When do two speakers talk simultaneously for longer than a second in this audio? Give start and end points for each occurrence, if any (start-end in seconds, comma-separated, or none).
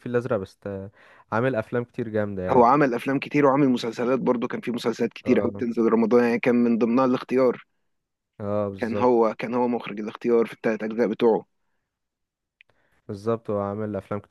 none